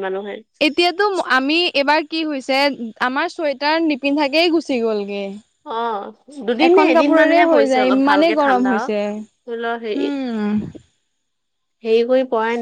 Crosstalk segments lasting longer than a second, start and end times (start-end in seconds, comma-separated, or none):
6.7-8.7